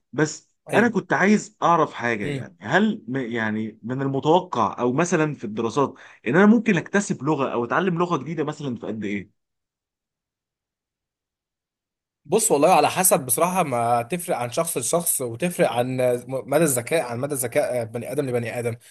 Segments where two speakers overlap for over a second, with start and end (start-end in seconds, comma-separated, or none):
none